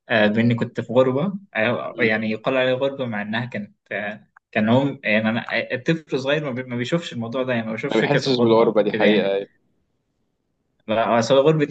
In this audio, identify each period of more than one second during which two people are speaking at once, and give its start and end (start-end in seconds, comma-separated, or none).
7.9-9.3